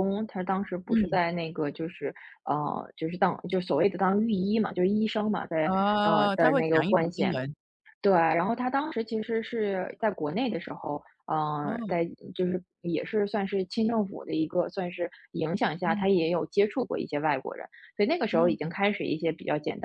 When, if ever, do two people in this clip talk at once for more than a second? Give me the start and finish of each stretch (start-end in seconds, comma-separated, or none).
5.6-7.3